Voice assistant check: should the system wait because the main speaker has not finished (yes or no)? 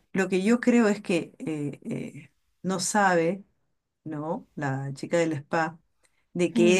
yes